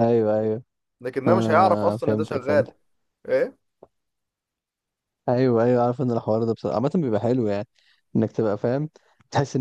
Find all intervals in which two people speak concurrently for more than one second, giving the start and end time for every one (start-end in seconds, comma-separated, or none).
1.3-2.7